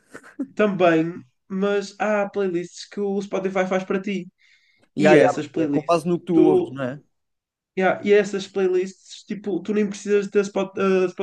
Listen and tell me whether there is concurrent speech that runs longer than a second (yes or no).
yes